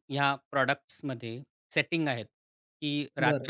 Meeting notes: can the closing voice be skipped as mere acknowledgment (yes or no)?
yes